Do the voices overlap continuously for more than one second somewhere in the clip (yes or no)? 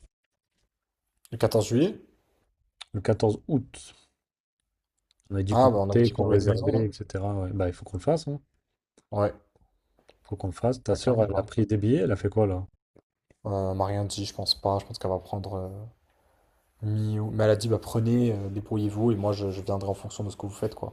yes